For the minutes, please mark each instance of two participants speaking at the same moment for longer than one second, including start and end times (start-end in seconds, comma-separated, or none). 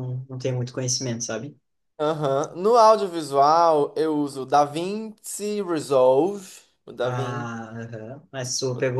none